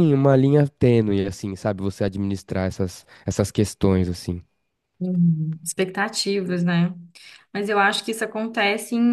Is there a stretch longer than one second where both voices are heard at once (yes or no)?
no